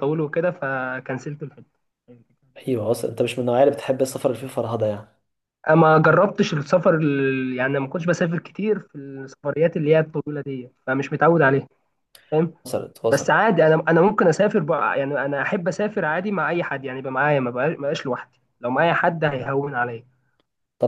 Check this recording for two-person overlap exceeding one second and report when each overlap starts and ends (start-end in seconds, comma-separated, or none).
none